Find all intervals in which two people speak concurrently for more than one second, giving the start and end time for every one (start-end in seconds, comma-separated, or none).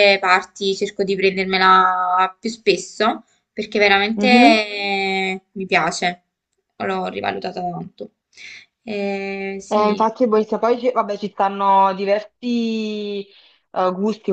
none